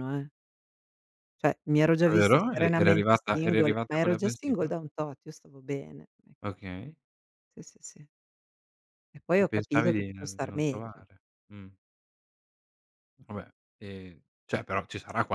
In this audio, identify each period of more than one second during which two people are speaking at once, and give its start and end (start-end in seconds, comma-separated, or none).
2.0-4.7, 9.3-11.0